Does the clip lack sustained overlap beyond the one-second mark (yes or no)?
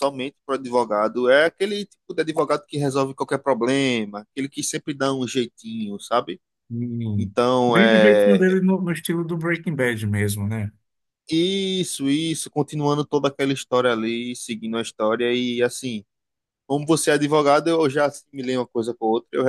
no